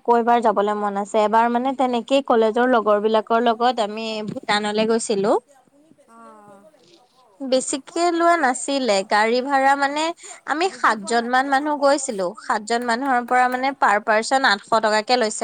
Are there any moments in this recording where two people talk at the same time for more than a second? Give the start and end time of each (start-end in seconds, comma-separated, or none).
10.7-13.2